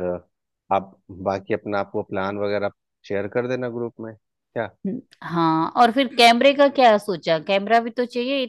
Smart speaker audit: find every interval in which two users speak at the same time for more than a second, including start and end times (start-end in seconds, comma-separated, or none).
none